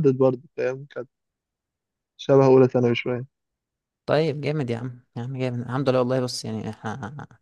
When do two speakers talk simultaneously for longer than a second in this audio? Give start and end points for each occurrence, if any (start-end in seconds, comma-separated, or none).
none